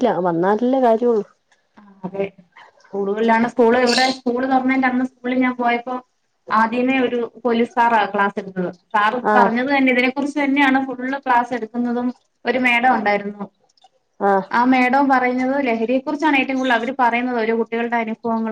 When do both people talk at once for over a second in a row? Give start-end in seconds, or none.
none